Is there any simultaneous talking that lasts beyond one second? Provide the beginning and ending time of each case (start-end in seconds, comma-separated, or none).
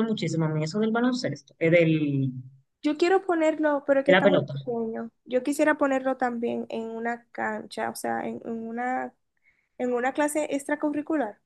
none